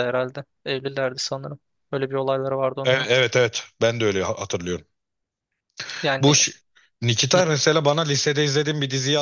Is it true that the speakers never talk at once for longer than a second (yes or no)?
yes